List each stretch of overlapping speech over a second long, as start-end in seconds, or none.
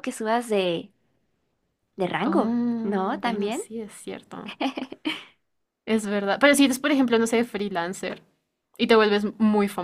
2.2-3.6